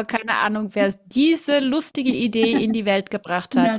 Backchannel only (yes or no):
no